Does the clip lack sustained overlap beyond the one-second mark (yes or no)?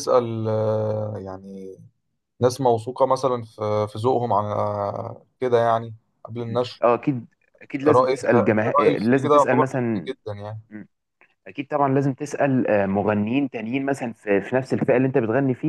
no